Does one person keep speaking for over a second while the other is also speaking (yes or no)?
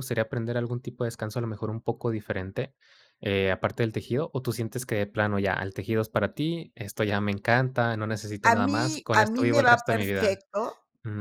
yes